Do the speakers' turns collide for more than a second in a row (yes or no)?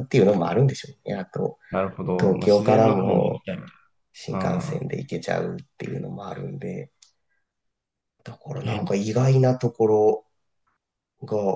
yes